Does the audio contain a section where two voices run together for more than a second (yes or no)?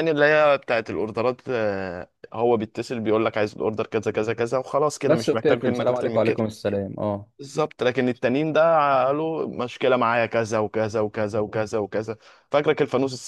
yes